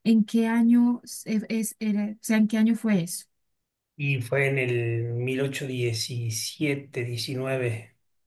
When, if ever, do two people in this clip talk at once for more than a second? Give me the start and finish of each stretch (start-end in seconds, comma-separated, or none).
none